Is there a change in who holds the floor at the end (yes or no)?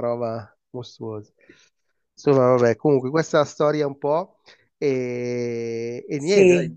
no